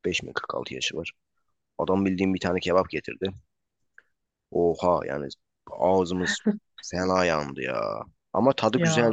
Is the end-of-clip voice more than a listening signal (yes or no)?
no